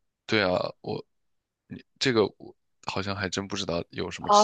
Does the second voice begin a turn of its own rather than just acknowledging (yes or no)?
yes